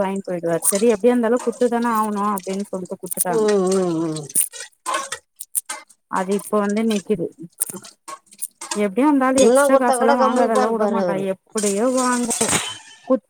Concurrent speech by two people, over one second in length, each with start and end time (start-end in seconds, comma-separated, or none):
9.5-11.2